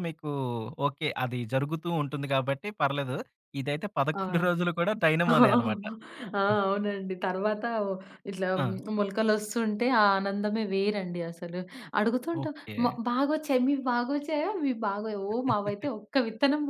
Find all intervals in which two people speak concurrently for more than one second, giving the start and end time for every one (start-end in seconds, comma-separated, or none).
none